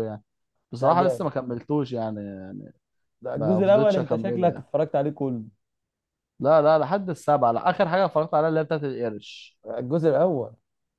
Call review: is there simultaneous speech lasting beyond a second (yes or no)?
yes